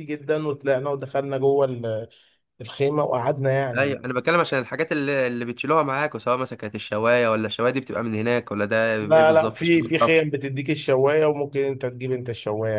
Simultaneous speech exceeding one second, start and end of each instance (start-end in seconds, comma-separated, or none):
9.0-10.3